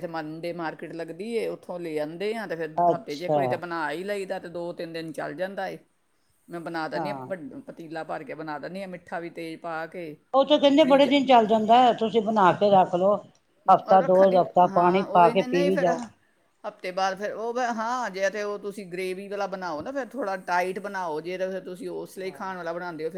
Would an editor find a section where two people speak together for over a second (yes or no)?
yes